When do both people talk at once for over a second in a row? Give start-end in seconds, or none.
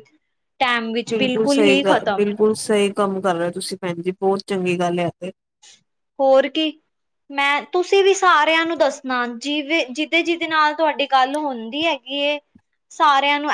none